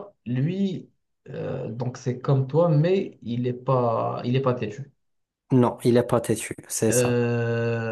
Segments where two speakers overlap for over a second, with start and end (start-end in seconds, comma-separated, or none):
none